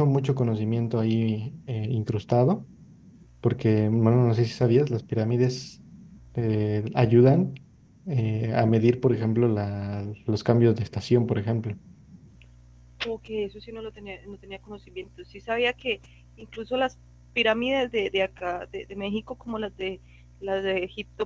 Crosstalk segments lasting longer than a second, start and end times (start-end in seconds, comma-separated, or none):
none